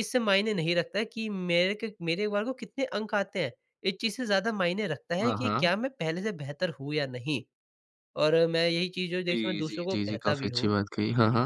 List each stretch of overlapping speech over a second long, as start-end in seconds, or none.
9.3-10.7